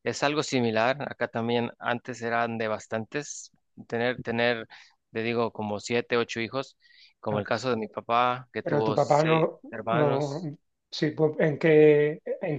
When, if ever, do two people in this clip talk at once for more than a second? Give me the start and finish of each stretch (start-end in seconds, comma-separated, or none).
8.6-10.4